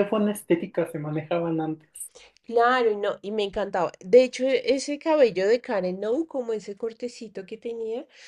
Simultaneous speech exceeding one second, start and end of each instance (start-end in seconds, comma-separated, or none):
none